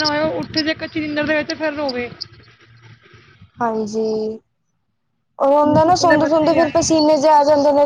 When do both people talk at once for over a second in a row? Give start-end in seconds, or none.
5.5-7.0